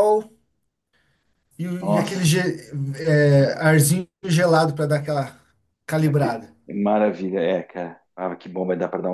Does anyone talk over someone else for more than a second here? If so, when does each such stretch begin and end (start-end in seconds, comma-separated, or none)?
none